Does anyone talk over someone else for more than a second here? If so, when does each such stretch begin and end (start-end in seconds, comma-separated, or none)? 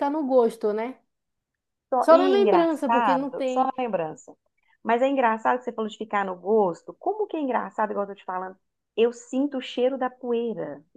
2.0-3.7